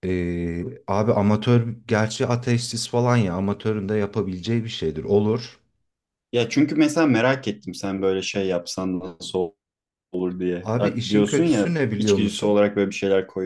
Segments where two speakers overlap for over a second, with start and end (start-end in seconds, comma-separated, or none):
10.6-12.7